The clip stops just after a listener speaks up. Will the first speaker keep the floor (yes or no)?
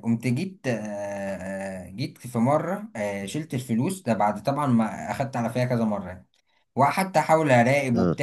yes